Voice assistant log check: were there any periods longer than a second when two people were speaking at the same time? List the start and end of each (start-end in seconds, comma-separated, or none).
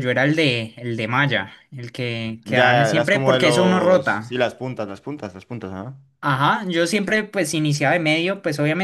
2.4-4.4